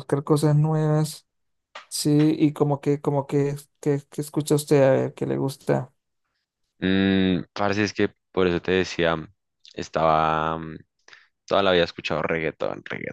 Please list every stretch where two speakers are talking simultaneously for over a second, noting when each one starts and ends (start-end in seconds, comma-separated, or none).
none